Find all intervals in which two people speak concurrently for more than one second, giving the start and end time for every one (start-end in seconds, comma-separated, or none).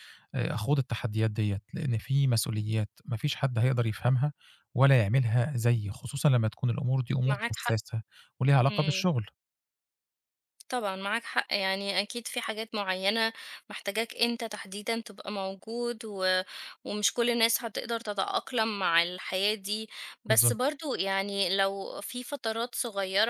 none